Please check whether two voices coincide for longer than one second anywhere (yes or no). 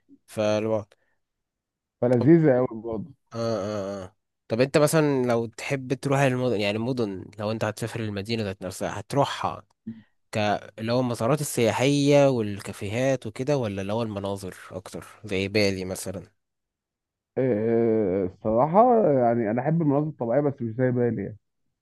no